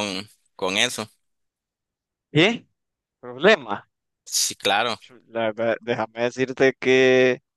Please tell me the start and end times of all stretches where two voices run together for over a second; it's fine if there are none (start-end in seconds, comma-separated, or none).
none